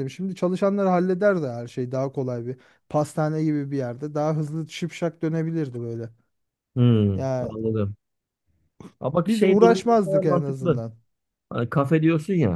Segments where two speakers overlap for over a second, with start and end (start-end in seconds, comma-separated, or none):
9.2-10.8